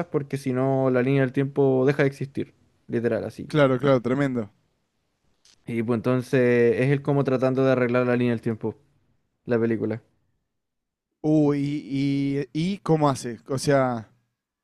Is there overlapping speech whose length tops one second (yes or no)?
no